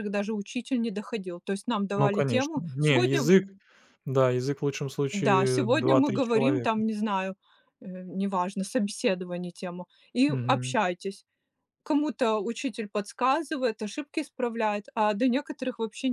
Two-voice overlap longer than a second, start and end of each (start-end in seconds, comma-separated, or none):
1.9-3.3, 5.1-6.8